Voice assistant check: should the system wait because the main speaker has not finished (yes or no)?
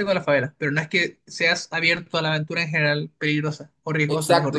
no